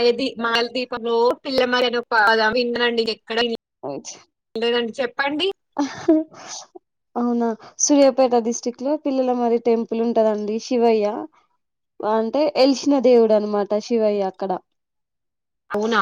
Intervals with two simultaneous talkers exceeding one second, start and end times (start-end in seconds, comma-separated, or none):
none